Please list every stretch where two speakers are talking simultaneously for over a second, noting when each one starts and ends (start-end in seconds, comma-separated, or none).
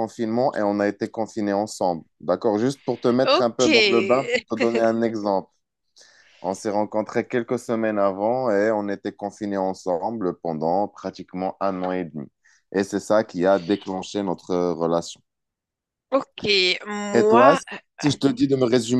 none